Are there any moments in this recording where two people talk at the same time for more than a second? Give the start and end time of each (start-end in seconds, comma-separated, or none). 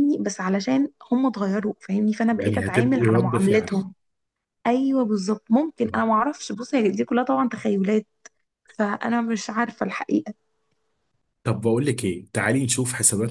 2.3-3.7